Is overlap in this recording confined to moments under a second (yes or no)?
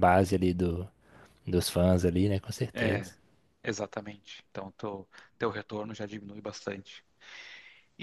yes